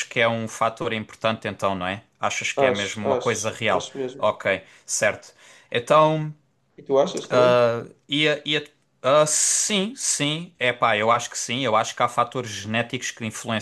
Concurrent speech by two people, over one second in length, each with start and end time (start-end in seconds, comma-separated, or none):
2.5-4.3